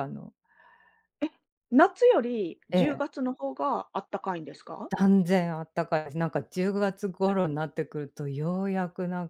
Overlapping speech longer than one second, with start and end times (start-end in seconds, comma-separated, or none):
none